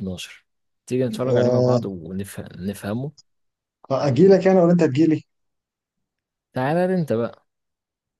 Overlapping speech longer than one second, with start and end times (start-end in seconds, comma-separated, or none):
none